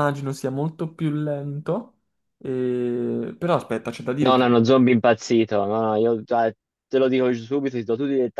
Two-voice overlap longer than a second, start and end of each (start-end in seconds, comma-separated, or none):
none